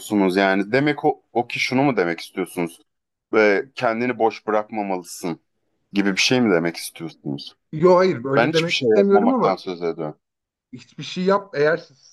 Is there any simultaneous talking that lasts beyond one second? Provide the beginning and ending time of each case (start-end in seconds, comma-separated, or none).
8.3-9.6